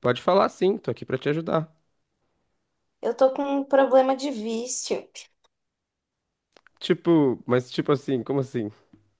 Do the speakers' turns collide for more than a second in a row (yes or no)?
no